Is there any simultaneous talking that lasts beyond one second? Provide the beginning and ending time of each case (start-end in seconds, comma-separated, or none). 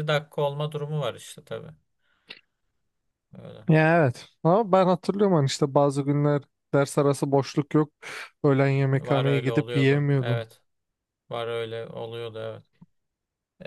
8.9-10.4